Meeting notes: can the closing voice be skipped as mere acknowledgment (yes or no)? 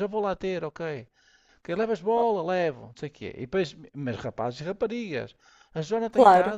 yes